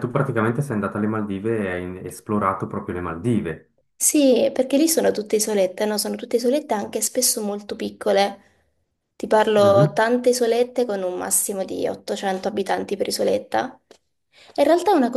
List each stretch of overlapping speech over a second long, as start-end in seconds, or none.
none